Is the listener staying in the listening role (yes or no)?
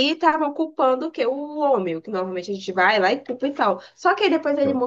yes